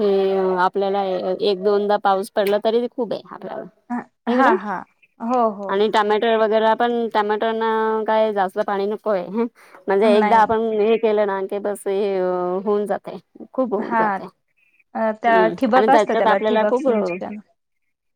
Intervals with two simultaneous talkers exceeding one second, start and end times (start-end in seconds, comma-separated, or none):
15.3-16.9